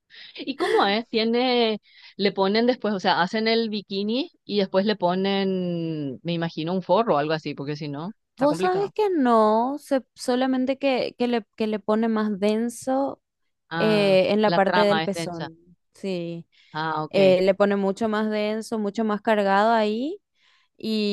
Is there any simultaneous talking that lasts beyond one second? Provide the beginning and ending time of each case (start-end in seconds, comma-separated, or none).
13.8-15.5